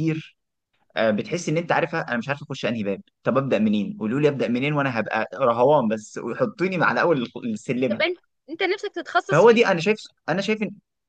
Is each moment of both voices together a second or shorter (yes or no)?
yes